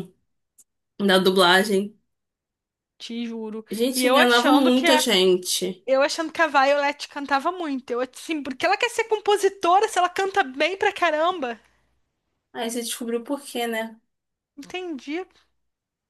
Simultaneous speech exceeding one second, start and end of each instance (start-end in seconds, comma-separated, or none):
3.7-5.0